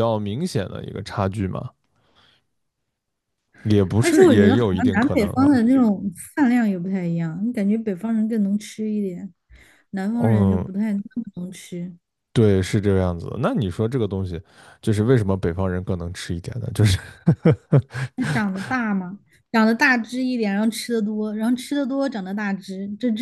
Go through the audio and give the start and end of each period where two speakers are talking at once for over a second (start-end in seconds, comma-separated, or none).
4.0-5.6